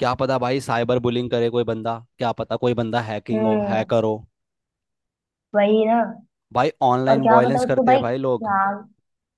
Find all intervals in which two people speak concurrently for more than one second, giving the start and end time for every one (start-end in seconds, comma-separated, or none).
7.1-8.5